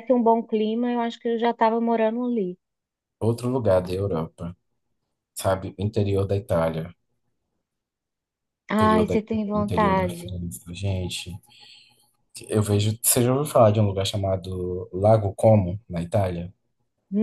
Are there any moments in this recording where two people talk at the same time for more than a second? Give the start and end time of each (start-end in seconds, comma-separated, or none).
8.8-10.3